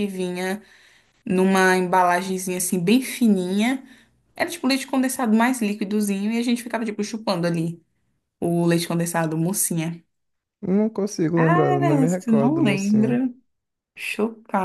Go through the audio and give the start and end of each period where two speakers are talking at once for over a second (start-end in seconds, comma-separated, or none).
11.4-13.2